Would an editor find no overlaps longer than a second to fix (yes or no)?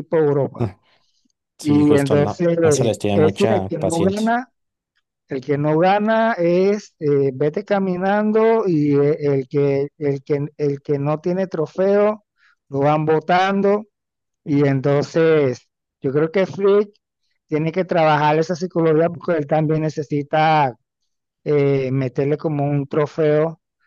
no